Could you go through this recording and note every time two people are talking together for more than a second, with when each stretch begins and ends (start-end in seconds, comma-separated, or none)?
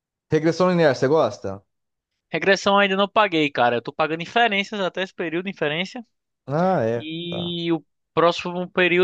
none